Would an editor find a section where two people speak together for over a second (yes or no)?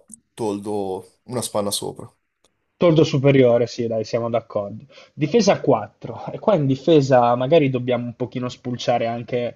no